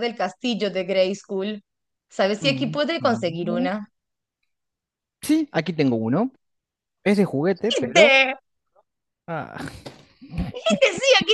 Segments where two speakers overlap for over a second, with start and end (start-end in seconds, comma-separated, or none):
2.4-3.7